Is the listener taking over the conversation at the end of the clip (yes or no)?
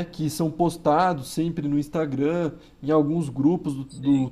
no